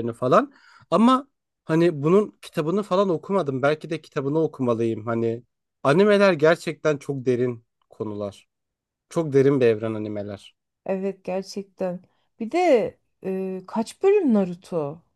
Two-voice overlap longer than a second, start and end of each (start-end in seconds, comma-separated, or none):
none